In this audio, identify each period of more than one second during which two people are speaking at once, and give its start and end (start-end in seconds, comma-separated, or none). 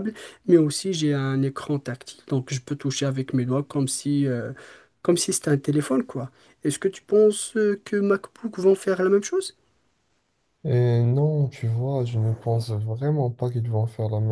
none